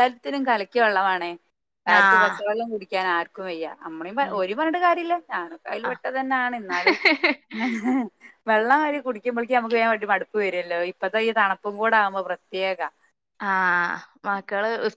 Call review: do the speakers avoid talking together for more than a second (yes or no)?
yes